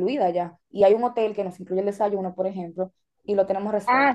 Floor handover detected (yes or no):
yes